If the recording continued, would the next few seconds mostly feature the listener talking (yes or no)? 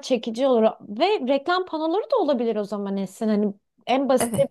no